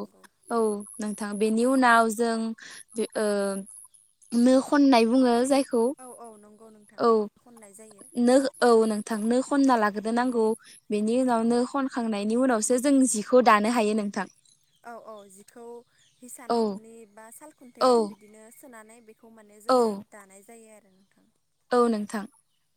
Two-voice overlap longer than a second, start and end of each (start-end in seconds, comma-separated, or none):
none